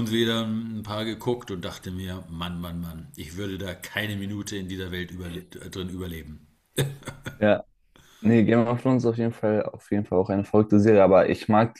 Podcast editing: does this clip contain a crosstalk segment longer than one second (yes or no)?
no